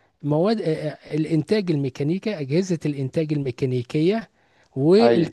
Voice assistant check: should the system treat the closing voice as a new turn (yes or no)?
no